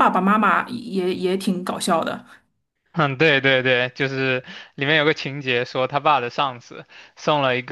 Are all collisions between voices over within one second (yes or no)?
yes